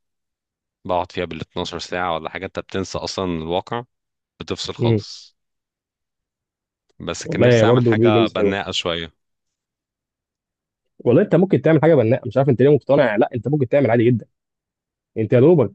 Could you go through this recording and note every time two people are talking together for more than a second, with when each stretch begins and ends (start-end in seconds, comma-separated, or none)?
7.2-8.6